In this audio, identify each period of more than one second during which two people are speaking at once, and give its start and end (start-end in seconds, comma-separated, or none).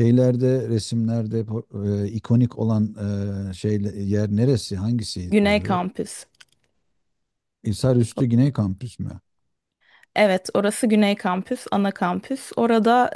none